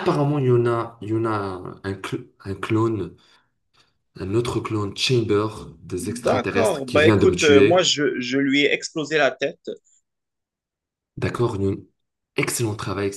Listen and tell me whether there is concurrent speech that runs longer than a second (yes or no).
yes